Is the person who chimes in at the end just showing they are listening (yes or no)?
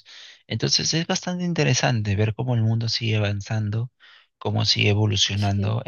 yes